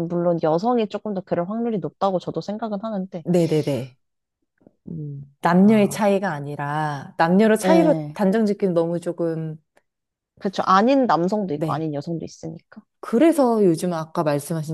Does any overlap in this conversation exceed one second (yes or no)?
no